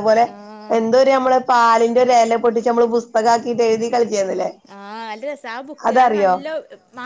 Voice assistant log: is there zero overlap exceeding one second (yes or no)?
yes